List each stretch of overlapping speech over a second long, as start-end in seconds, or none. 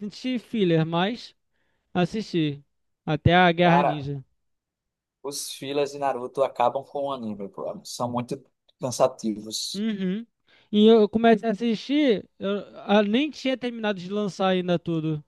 none